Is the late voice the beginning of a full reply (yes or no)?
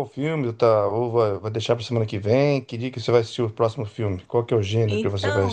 yes